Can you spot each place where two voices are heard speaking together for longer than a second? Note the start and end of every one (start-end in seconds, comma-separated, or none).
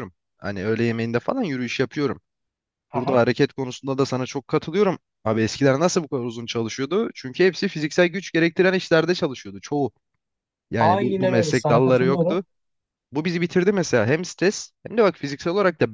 10.8-12.4